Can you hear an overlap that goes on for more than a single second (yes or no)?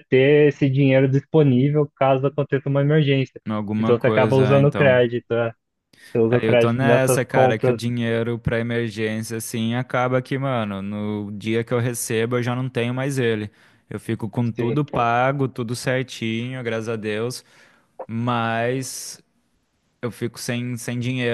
yes